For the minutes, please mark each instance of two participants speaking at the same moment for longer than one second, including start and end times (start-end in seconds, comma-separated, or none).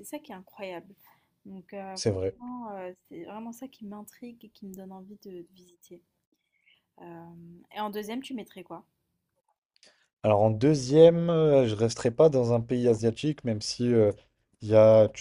none